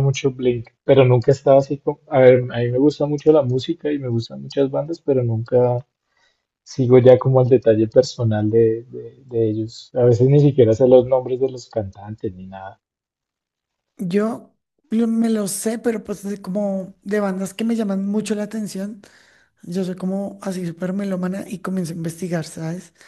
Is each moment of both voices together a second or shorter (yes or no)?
yes